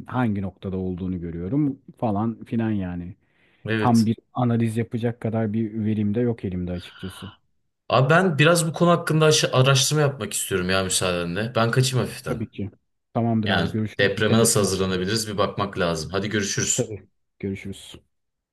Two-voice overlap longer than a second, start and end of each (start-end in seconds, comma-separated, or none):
13.4-15.0